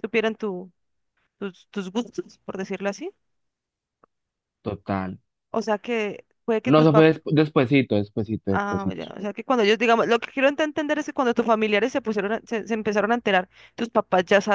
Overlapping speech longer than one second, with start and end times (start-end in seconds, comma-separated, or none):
none